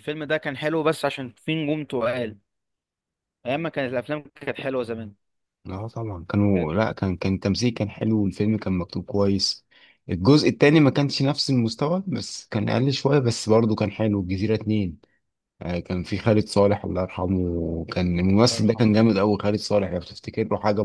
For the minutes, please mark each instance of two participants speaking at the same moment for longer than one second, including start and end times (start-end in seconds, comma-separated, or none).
none